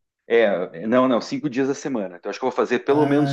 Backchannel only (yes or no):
yes